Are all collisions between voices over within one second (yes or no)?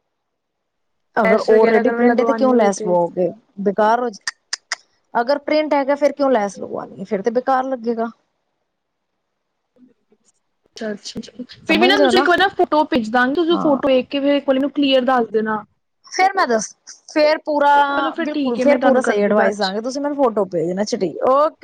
no